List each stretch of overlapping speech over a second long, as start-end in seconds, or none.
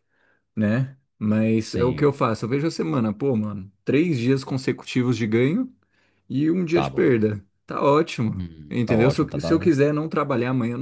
8.4-9.7